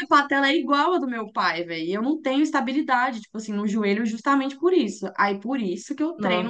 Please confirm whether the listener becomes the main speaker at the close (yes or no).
no